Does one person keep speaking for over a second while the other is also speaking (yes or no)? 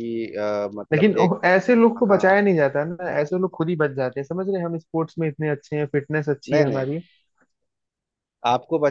no